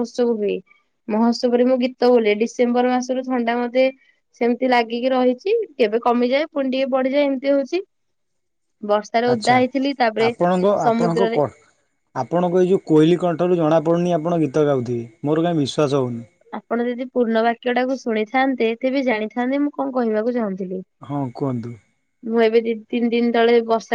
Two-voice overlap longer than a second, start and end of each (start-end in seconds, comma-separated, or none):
none